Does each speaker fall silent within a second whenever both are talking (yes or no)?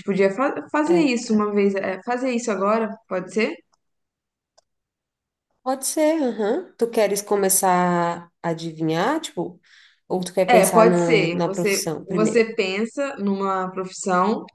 no